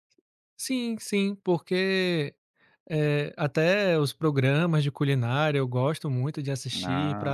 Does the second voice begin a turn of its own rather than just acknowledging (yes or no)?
no